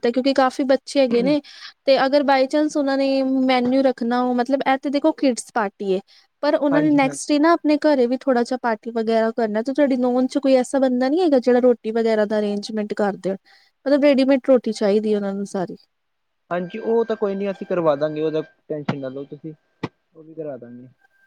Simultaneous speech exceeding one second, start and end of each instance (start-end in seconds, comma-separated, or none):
none